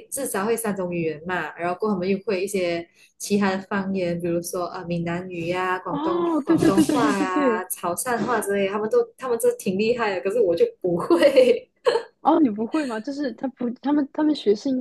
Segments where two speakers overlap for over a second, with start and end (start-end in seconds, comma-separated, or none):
5.8-7.7